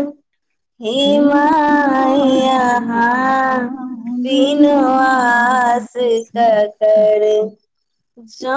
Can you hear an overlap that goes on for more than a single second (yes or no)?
yes